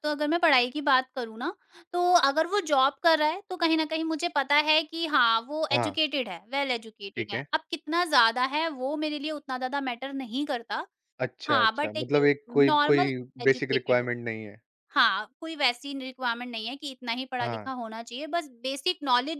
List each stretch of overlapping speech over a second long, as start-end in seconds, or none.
11.5-14.1